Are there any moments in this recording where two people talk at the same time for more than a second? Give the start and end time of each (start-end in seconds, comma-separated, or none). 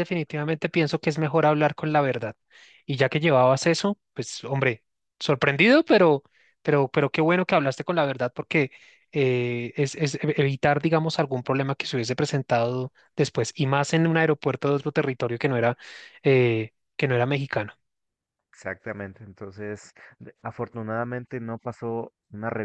none